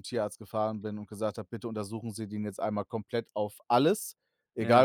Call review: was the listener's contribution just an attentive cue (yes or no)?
yes